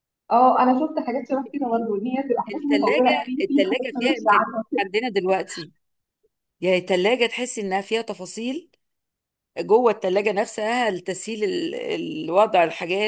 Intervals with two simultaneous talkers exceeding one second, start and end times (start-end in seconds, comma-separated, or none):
2.5-4.8